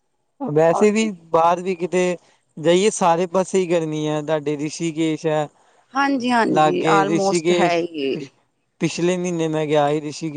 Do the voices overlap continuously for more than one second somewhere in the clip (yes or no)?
yes